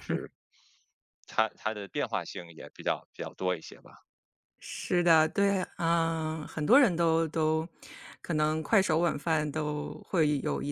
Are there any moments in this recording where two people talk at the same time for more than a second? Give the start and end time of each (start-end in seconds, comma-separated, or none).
none